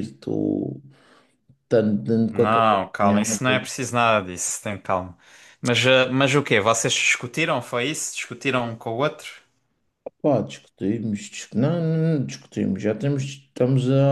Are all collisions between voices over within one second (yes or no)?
no